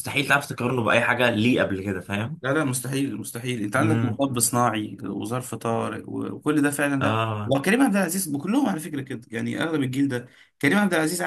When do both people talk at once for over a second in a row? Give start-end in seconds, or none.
none